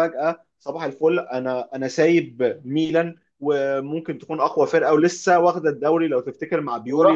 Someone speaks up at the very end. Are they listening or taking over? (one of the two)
listening